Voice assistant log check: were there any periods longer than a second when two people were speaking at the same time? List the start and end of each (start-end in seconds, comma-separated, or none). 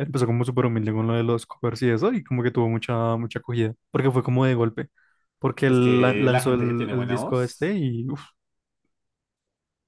5.6-7.7